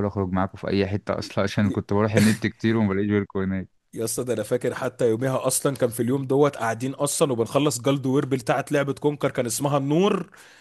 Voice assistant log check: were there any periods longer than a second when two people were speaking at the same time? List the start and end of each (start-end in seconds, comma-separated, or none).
none